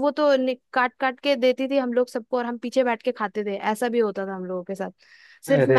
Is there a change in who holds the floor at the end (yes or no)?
no